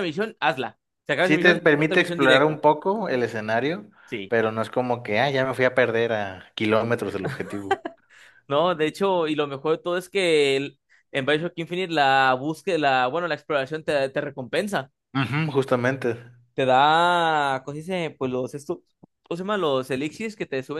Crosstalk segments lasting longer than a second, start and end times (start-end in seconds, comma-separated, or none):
1.2-2.5